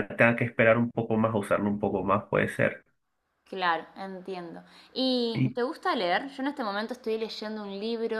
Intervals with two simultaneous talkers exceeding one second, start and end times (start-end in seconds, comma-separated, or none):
none